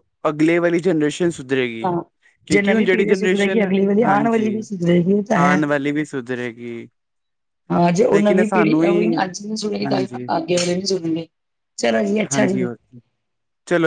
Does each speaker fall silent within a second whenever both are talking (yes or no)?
no